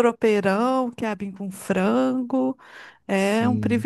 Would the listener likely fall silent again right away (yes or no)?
no